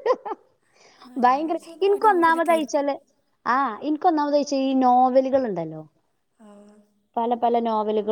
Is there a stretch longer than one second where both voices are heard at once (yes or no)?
yes